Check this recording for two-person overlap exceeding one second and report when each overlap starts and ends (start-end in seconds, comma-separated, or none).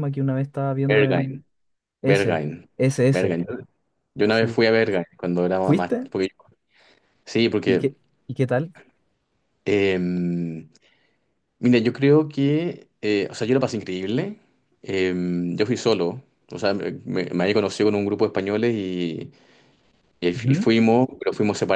none